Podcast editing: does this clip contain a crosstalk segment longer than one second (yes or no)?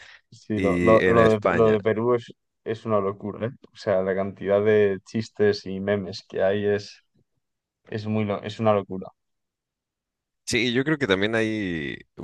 yes